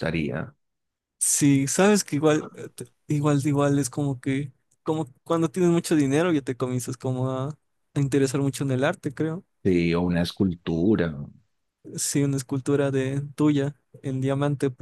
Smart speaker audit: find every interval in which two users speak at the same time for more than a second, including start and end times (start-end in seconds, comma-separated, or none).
none